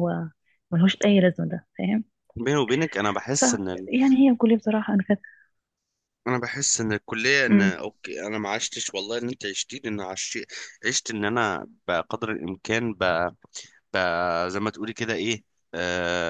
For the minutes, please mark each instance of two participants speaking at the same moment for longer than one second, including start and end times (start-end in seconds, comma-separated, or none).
none